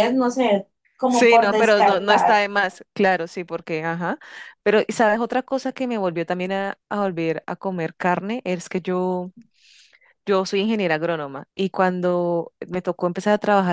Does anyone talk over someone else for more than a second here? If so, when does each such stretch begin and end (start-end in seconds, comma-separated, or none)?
1.1-2.4